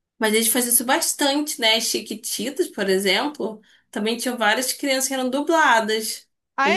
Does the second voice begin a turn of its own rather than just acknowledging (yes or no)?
yes